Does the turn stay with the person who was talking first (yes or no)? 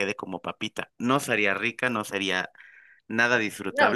yes